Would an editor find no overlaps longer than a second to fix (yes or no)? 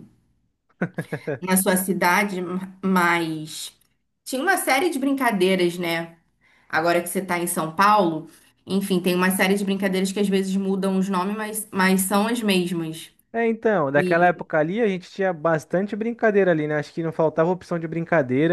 yes